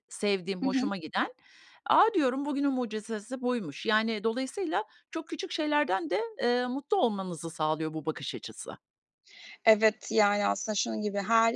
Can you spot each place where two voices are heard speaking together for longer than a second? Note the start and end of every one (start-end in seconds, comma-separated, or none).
none